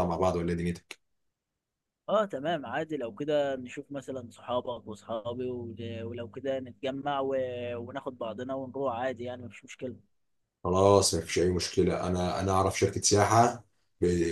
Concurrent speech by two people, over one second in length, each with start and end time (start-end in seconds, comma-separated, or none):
none